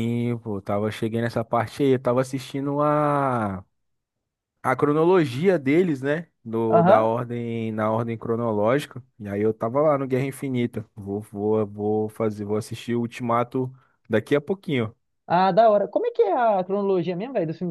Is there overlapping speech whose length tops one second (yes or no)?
no